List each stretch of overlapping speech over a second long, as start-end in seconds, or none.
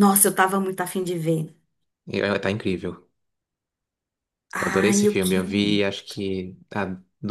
4.5-5.9